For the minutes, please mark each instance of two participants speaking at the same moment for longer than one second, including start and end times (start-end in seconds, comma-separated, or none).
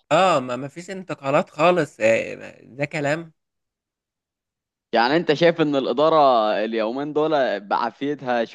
none